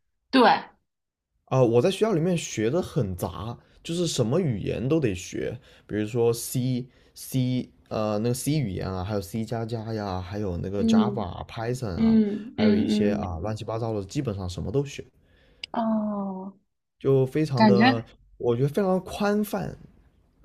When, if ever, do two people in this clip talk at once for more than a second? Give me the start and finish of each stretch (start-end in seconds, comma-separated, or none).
11.9-13.3